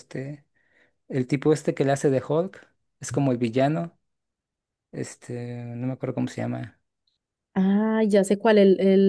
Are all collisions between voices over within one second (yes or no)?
yes